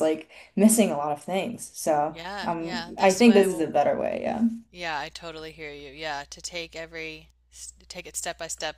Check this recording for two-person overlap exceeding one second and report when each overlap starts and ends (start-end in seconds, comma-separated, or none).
2.1-3.6